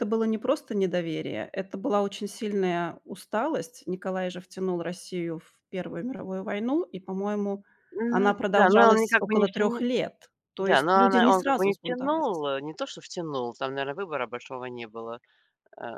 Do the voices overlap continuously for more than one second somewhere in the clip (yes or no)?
yes